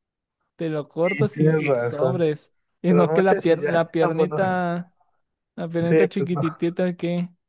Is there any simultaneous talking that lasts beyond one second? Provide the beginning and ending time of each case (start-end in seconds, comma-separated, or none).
1.0-2.2, 2.9-4.4